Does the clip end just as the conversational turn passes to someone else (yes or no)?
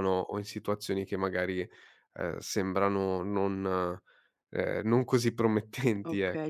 yes